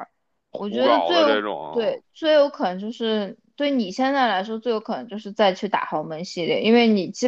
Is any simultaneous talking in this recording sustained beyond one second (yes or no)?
yes